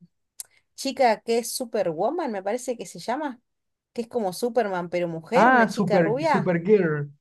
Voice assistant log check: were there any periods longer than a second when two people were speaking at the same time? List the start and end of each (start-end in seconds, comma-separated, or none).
5.3-6.5